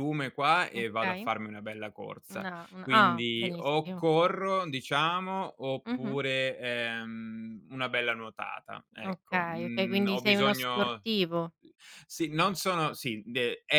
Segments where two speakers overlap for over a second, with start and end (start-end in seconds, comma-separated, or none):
2.3-4.0, 9.0-11.0